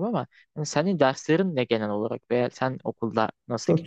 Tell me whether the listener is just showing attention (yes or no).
no